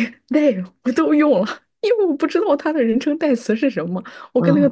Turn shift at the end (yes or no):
no